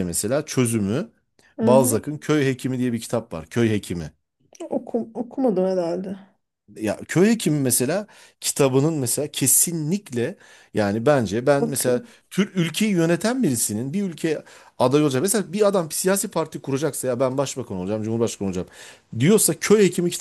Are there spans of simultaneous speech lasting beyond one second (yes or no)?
no